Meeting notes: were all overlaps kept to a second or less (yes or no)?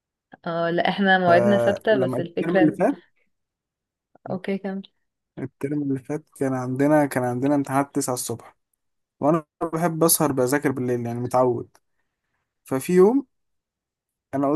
no